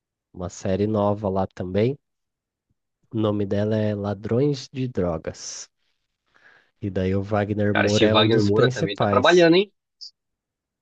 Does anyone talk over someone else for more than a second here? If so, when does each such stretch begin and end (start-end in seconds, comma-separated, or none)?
7.7-9.5